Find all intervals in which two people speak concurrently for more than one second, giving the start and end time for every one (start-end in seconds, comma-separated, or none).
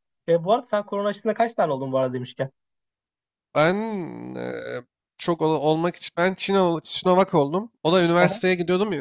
none